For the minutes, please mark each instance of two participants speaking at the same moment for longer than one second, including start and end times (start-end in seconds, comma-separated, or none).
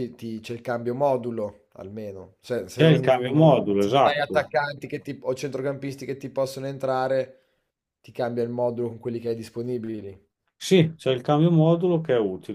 2.7-4.5